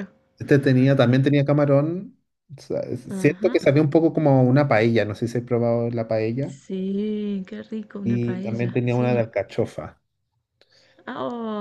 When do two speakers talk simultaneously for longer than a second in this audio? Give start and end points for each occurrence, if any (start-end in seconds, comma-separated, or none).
8.1-9.2